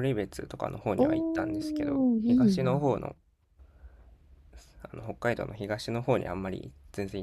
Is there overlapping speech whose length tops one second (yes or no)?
yes